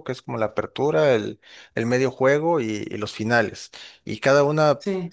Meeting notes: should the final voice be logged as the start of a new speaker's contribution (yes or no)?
no